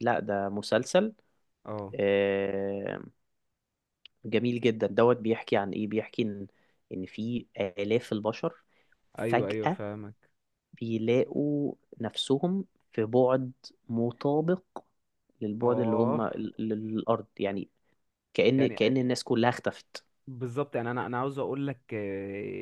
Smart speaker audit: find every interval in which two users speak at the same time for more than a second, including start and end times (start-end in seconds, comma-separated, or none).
none